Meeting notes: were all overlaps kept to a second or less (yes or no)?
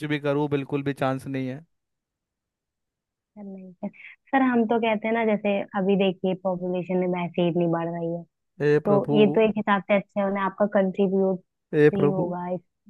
yes